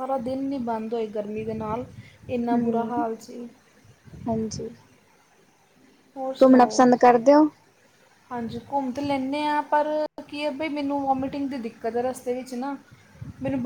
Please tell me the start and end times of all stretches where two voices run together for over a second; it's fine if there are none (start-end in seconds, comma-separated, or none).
none